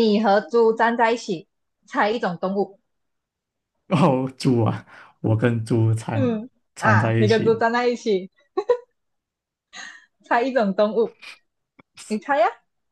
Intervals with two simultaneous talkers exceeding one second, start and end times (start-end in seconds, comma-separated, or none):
6.1-7.7